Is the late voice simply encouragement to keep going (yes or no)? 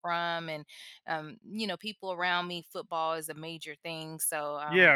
no